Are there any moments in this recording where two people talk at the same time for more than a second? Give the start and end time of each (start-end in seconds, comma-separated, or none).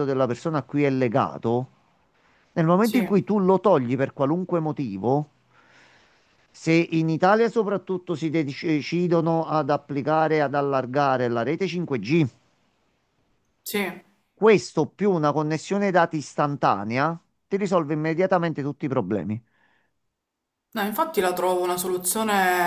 none